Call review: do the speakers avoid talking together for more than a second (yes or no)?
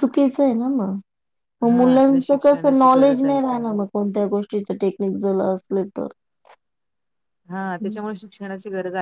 no